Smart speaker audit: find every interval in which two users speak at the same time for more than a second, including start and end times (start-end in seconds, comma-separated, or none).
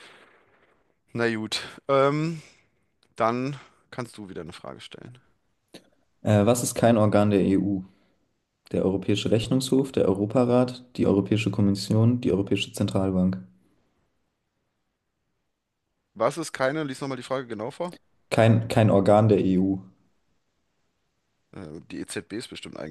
none